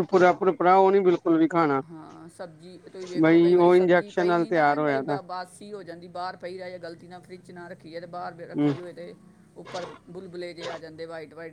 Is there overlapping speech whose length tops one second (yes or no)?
yes